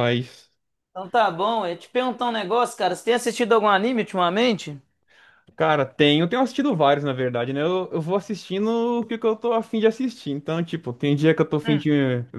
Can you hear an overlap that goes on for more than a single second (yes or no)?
no